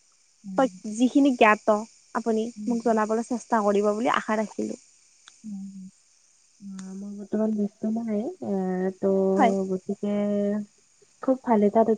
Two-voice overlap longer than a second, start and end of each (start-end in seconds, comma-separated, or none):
none